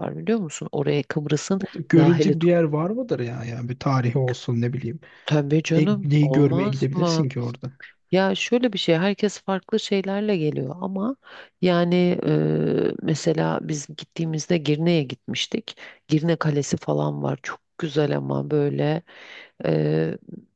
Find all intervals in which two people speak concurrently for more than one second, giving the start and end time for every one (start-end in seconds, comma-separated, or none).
5.7-7.3